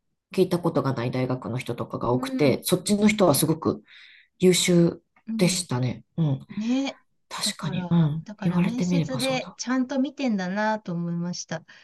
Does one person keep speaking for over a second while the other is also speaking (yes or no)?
yes